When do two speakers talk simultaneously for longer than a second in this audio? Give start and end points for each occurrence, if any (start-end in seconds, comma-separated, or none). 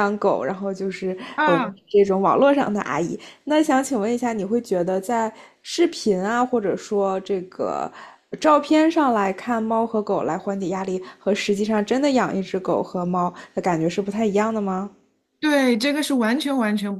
none